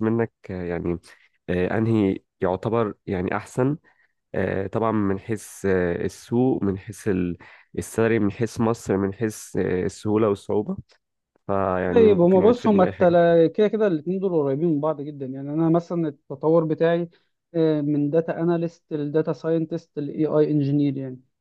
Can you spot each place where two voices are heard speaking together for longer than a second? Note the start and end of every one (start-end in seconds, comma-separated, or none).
11.9-13.2